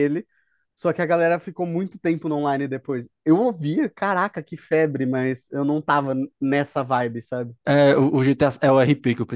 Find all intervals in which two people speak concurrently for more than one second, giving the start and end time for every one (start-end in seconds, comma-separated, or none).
none